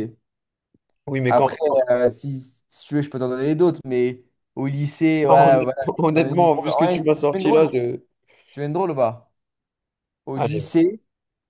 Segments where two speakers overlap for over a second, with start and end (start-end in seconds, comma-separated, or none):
5.2-7.7